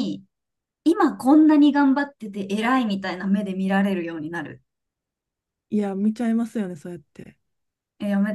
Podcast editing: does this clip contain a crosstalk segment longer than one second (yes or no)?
no